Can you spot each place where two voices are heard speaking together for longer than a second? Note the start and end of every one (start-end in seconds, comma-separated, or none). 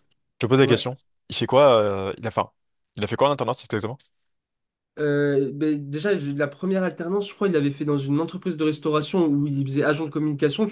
none